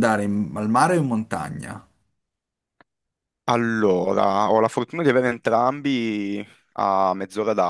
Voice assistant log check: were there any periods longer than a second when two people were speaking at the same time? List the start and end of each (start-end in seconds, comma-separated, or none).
none